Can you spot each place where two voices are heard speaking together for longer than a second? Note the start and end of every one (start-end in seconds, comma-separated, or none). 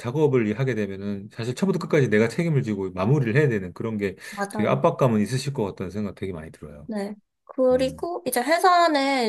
none